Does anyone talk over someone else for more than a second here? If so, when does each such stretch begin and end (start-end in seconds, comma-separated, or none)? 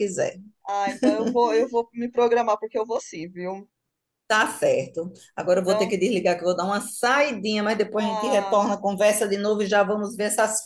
none